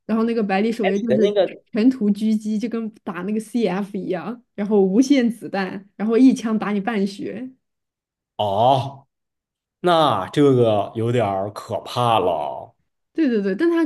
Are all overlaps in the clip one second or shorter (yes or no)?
yes